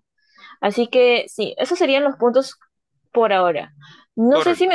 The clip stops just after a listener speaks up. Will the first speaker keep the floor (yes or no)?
yes